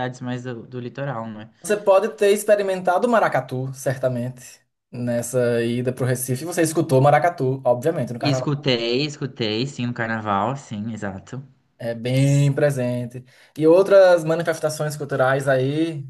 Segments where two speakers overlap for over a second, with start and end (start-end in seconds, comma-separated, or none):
none